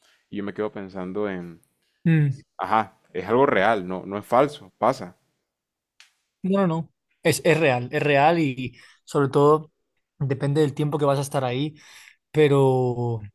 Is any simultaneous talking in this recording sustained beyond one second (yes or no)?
no